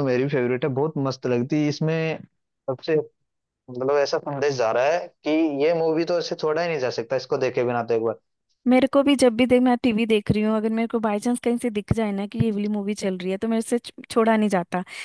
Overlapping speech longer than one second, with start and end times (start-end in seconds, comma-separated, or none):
none